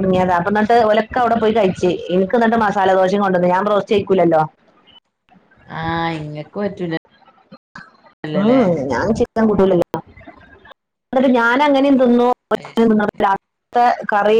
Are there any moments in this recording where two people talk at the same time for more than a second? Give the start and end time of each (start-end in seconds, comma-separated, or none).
none